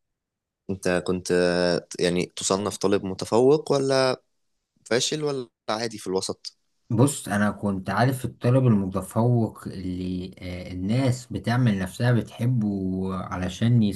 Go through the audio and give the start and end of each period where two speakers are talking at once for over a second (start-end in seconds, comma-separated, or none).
none